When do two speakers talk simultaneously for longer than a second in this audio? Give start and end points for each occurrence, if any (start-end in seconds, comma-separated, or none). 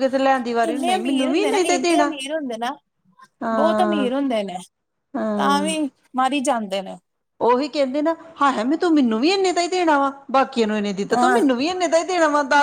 0.7-2.1